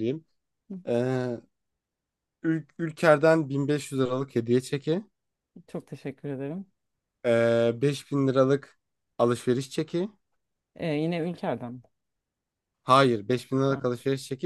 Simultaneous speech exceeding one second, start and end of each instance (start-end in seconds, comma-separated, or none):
none